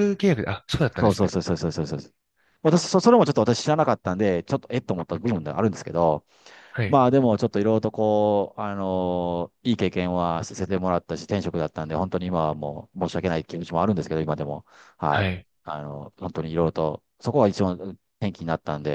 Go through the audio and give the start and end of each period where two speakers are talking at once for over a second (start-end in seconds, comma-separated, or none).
none